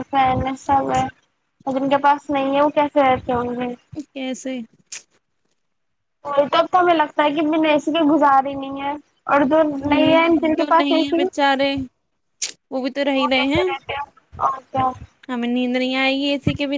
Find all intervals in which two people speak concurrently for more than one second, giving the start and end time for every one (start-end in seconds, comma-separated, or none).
9.7-11.2